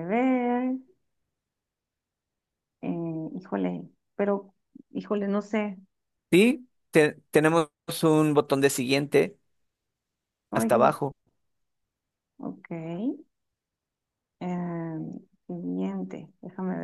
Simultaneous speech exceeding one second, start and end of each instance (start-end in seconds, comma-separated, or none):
none